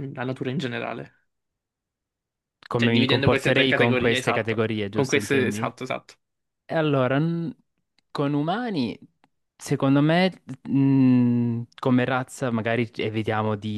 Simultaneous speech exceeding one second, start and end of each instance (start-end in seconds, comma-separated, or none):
2.7-5.7